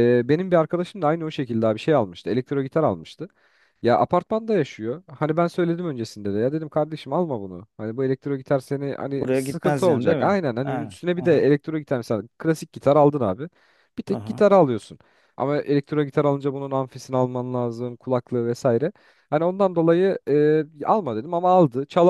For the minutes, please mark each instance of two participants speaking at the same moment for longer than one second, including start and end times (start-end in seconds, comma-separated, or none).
9.2-11.4